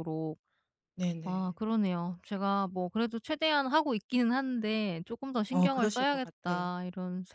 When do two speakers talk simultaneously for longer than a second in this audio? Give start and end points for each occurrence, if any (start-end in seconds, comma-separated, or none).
5.5-6.7